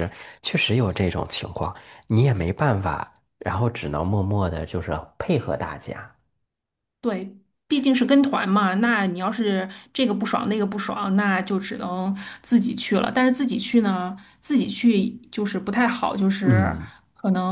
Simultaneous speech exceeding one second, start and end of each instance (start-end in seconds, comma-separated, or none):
none